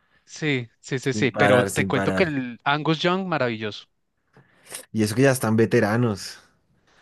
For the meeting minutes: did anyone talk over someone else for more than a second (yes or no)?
yes